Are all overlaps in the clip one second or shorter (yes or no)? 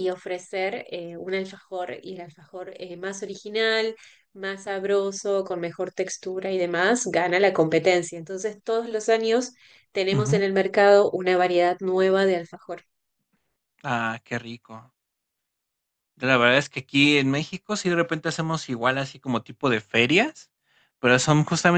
yes